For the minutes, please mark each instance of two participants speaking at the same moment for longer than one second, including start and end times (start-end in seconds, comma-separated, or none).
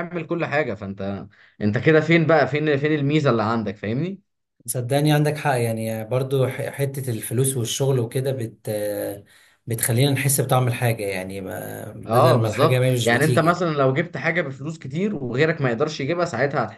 12.1-13.6